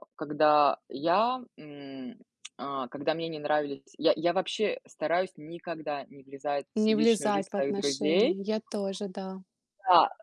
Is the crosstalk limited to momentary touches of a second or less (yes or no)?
no